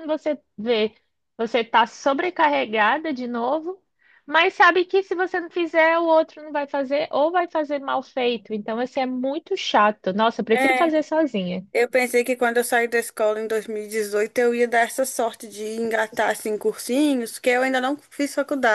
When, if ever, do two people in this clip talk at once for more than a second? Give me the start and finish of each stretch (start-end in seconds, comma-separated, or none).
none